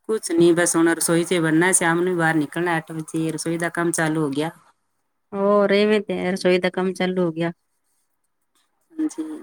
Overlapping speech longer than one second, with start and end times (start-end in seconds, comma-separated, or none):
none